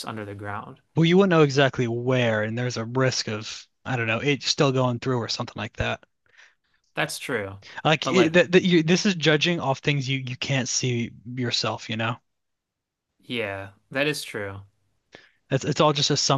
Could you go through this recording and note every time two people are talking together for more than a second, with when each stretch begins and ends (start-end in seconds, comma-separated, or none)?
none